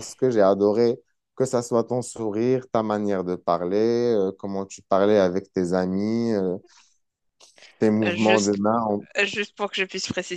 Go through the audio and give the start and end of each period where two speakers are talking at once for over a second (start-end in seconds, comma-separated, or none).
none